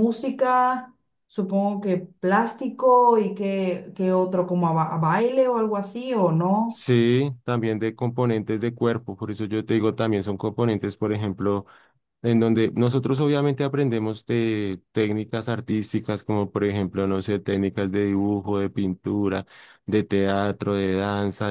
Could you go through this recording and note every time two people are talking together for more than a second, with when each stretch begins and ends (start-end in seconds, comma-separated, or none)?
none